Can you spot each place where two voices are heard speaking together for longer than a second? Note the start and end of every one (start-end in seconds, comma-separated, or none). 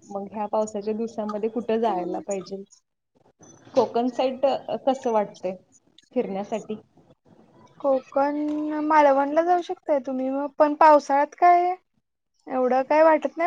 none